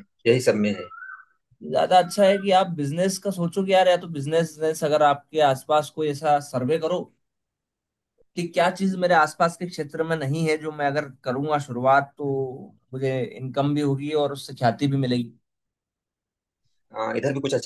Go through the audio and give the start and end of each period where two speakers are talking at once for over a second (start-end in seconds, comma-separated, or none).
none